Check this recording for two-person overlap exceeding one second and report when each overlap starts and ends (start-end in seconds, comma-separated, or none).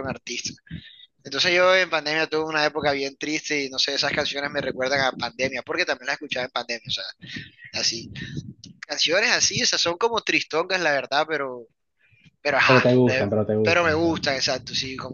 12.7-14.2